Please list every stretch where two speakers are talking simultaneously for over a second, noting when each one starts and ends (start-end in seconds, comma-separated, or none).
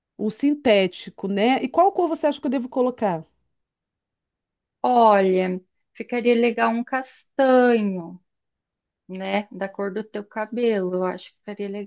none